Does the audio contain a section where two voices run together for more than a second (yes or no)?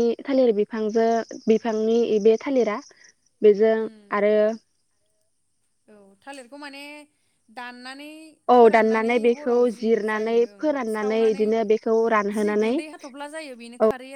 yes